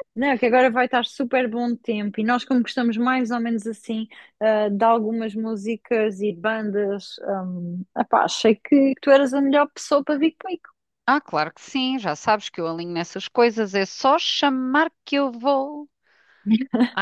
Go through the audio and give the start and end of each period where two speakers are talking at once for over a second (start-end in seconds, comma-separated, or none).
none